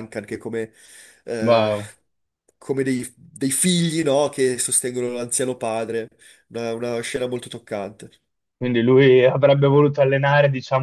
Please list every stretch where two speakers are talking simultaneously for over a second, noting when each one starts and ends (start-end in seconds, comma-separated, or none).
none